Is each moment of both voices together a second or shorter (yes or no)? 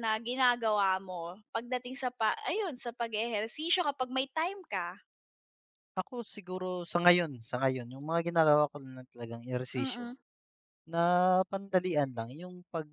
yes